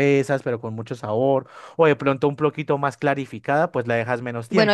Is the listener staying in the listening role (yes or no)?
no